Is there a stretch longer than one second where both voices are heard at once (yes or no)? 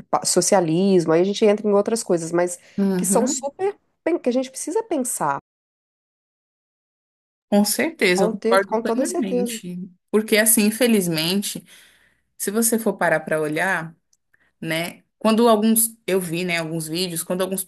yes